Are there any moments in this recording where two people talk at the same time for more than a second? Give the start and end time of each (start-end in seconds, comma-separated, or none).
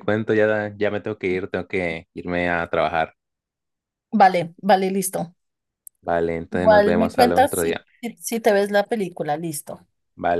6.5-7.8